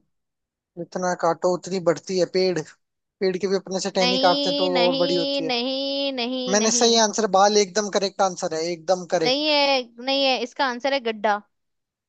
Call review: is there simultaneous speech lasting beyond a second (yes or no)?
yes